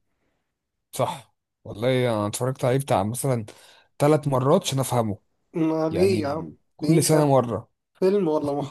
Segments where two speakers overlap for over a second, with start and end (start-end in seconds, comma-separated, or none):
5.9-7.3